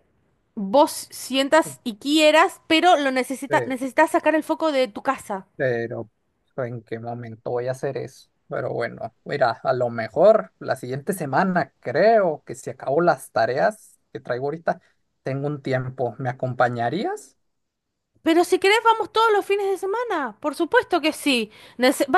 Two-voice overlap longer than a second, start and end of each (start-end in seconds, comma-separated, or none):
none